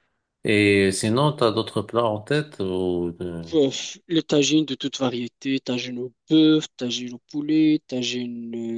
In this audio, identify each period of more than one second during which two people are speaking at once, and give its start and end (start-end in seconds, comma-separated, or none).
none